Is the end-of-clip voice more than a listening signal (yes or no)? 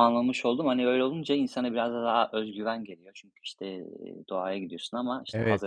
yes